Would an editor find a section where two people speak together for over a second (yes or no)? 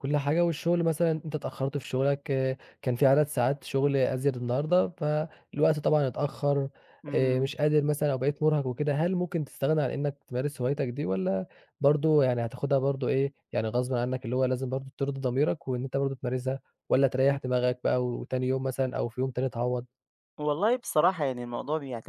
no